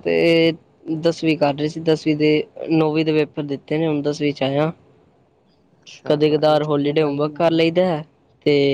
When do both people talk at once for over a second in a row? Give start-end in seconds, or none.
6.0-7.7